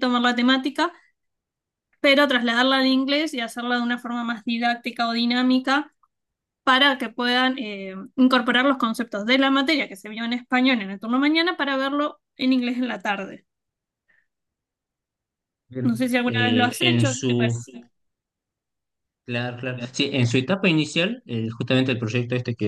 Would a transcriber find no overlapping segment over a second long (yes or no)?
no